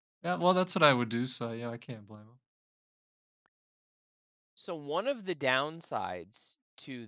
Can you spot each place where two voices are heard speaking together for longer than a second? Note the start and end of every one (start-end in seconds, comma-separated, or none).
none